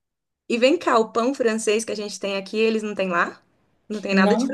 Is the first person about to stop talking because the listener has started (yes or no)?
yes